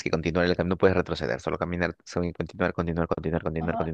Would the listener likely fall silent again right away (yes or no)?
no